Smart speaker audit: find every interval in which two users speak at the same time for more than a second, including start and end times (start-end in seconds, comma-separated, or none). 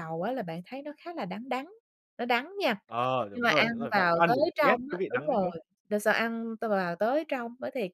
3.3-5.5